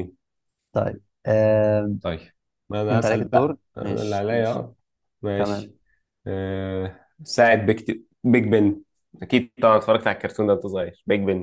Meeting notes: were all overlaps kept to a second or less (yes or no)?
no